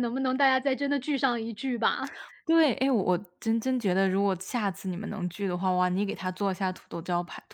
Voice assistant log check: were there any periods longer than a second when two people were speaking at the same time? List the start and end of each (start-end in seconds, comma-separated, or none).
none